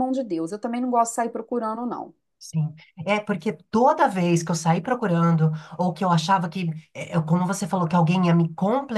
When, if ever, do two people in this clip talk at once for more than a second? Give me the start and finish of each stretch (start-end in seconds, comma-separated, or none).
none